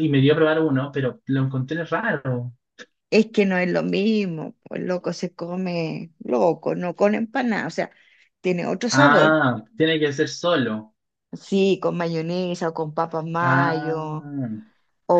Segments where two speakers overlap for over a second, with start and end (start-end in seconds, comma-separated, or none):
none